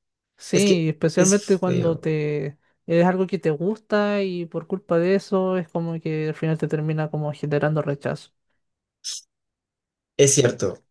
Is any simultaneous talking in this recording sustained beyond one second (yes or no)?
yes